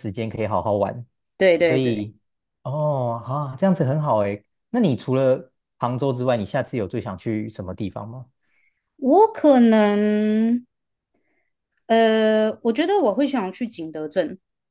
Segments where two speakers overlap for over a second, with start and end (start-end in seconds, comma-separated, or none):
none